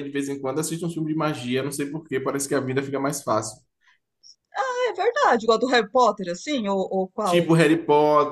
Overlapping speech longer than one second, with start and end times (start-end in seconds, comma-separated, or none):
none